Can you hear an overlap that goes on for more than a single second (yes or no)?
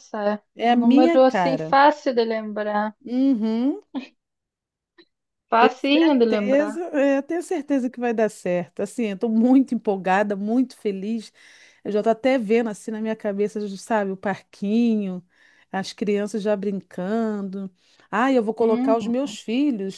yes